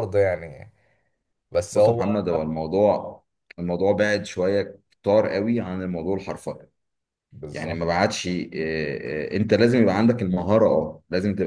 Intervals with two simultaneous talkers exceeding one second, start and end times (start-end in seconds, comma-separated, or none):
none